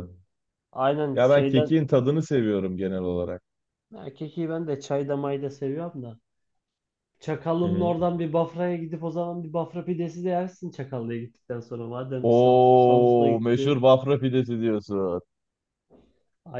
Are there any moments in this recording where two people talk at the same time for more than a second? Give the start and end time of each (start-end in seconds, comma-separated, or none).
12.2-13.9